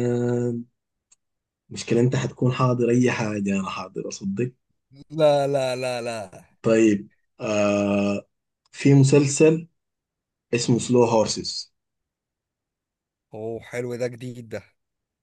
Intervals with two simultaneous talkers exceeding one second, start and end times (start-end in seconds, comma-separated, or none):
none